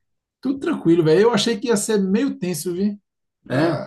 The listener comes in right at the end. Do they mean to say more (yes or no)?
no